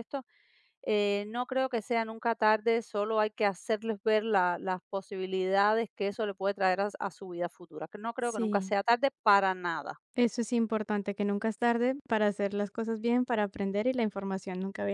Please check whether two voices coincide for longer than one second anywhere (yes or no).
no